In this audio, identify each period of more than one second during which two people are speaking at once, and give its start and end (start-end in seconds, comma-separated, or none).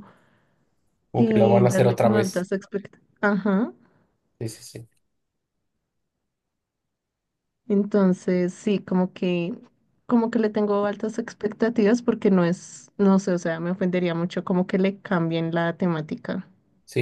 1.1-2.5